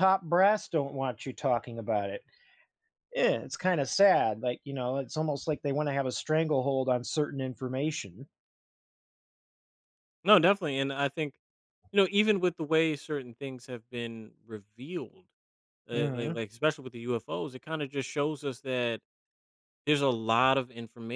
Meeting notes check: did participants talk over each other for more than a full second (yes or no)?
no